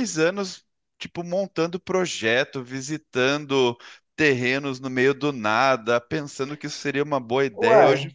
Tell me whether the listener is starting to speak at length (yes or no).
no